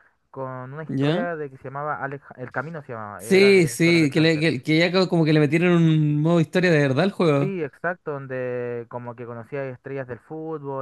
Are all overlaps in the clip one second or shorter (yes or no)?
no